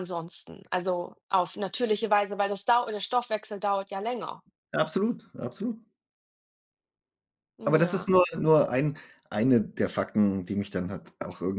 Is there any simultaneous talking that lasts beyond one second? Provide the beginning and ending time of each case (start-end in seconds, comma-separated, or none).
none